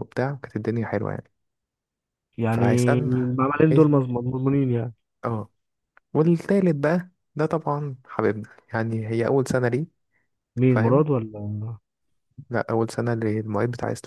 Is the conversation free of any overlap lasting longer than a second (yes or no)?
no